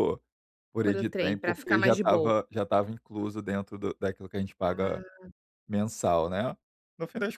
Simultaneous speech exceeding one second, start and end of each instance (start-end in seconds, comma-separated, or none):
0.8-2.3